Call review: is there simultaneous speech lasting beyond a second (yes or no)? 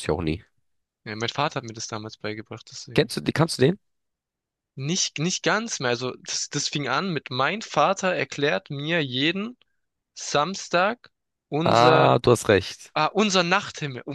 no